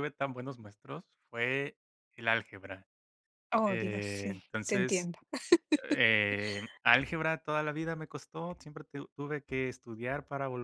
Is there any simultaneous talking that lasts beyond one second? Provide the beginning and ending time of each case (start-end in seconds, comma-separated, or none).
3.7-5.1